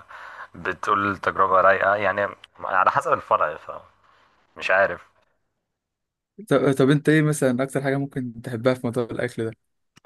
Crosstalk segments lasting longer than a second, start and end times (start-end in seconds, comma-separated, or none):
none